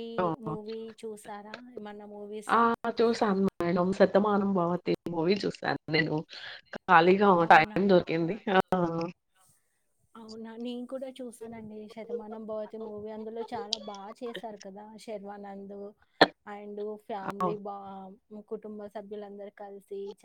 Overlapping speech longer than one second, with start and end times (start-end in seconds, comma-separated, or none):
none